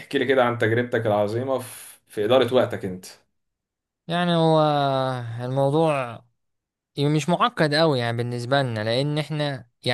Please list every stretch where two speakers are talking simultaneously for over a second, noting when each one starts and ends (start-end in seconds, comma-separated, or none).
none